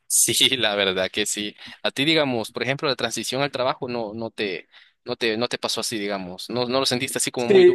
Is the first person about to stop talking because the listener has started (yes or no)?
yes